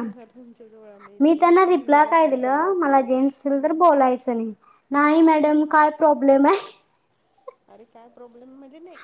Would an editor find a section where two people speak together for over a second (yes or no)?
yes